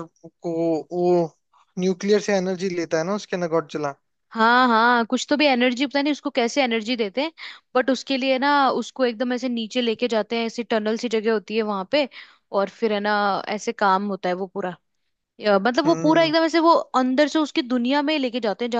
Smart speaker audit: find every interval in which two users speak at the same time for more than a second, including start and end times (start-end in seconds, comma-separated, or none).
none